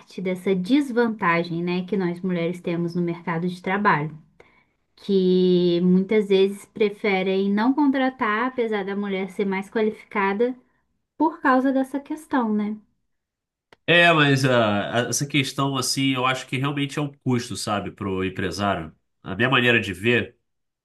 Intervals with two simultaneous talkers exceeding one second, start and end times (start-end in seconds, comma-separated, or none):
none